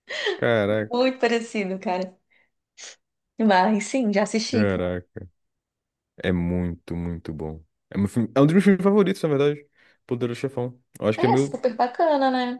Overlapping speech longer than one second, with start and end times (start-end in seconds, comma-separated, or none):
none